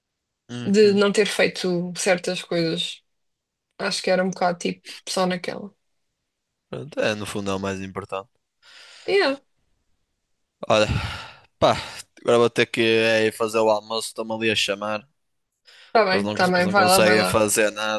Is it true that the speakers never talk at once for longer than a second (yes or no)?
no